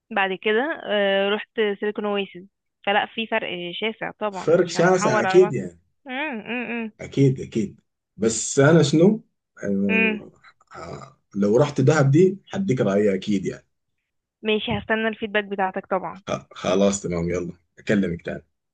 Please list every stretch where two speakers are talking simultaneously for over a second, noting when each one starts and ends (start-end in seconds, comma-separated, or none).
4.3-5.5